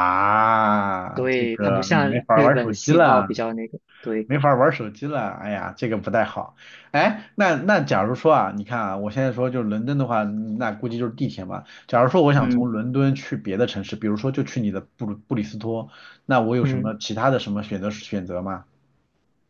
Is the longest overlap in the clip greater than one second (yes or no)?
yes